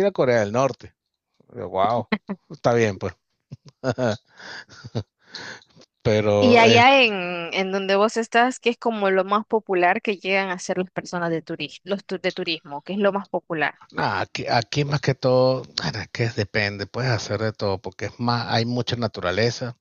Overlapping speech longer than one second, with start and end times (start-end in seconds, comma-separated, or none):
none